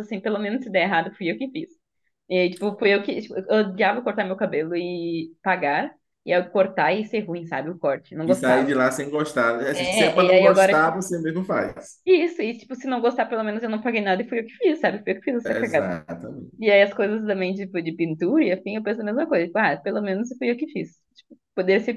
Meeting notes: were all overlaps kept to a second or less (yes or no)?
no